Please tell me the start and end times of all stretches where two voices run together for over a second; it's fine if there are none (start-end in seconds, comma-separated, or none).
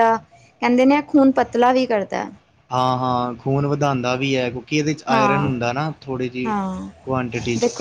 none